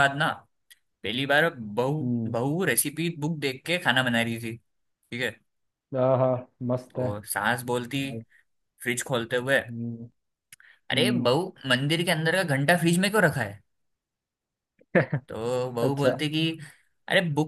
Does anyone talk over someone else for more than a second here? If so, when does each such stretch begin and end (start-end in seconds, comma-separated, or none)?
none